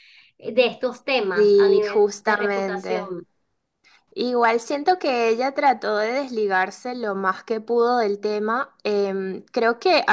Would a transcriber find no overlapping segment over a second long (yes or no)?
no